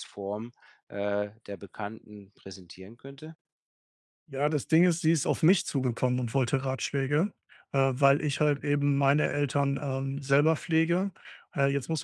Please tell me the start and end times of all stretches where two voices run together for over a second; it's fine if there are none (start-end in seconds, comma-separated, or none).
none